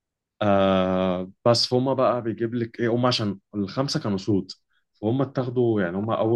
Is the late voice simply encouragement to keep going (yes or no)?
yes